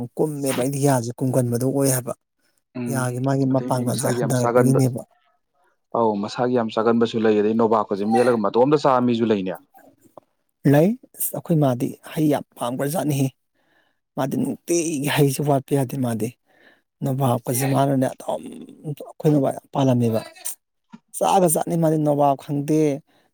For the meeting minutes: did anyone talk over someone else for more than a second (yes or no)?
yes